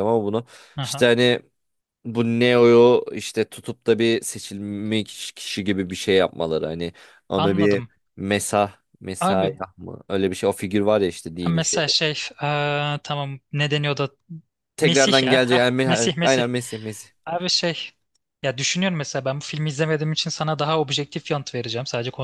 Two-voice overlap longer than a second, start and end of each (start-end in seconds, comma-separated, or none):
14.8-16.4